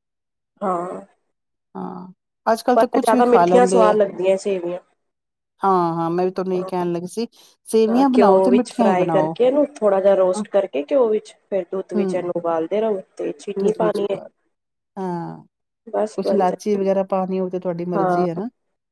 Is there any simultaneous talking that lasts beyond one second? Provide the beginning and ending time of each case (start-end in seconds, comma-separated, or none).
2.7-3.9